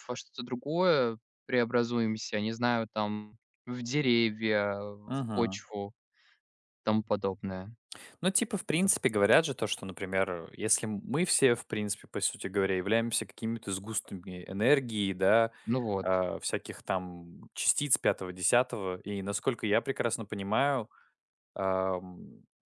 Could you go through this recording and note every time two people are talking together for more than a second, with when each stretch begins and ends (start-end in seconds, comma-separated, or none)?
none